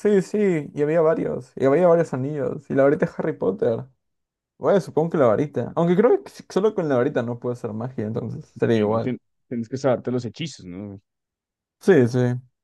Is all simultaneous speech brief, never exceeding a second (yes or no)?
yes